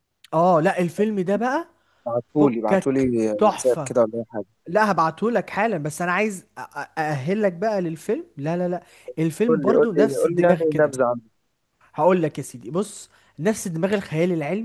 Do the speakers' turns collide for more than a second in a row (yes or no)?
yes